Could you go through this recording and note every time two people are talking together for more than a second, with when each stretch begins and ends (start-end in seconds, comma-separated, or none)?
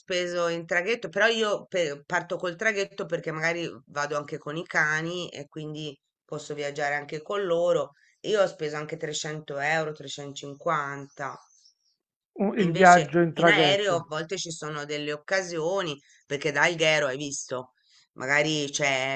12.6-14.1